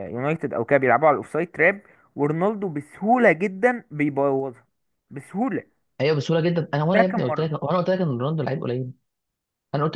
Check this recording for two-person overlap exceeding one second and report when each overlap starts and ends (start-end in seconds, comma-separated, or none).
none